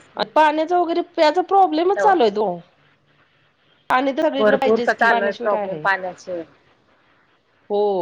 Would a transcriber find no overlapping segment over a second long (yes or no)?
no